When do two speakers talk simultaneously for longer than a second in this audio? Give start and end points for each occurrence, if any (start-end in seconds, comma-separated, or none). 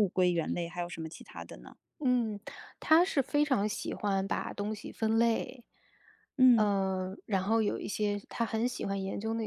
none